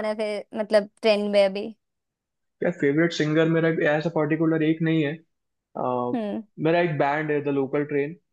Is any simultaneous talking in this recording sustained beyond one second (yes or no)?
no